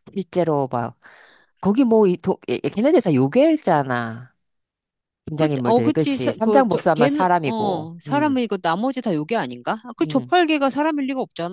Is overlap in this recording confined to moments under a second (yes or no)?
no